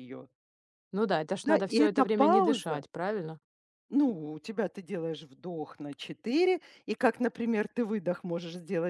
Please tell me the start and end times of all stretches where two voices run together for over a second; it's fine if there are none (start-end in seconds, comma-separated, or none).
1.4-2.8